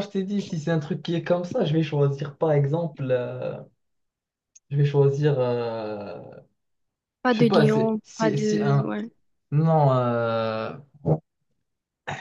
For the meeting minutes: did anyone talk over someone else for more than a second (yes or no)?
yes